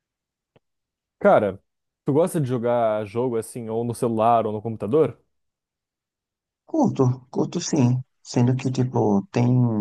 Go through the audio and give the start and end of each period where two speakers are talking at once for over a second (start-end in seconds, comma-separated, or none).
none